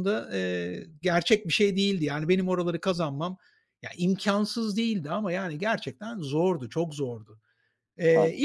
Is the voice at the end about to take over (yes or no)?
no